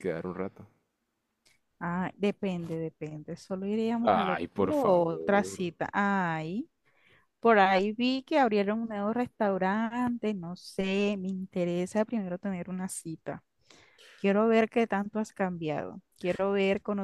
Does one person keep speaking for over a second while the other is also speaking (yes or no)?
yes